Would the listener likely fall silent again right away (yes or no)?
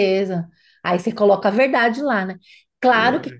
yes